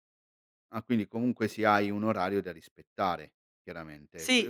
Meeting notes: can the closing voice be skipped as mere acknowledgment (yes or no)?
no